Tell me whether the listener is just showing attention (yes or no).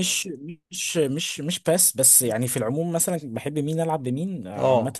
yes